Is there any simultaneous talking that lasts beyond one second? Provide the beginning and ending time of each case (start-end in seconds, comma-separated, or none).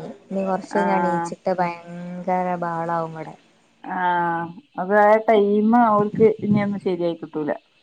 none